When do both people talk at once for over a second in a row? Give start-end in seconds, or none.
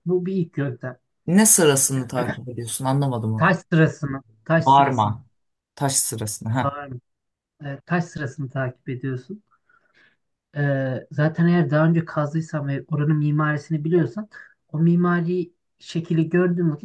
none